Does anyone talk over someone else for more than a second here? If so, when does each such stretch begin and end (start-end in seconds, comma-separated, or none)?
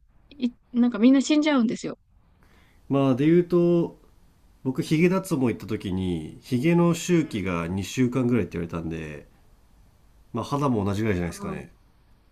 none